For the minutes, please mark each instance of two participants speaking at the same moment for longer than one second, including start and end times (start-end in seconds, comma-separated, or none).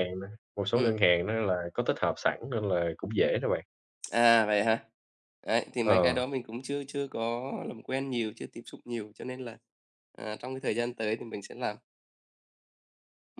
none